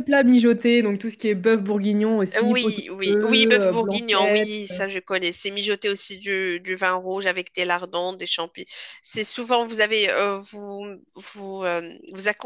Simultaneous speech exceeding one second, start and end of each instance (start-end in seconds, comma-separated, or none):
2.4-4.5